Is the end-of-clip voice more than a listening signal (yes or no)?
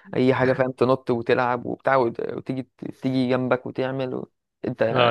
yes